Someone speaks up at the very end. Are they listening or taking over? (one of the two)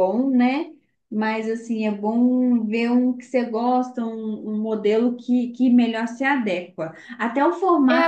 taking over